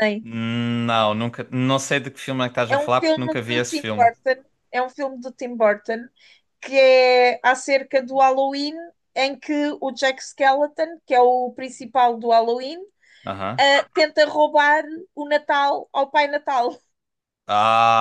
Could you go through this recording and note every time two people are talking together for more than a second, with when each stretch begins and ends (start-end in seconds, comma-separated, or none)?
2.7-4.1